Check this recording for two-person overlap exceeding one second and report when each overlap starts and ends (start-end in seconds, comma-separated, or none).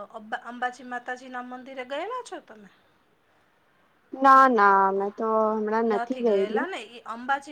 none